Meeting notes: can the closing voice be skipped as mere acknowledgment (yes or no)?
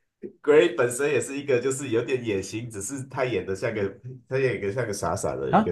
no